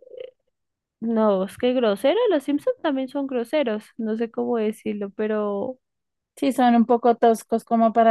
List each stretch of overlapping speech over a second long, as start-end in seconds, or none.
none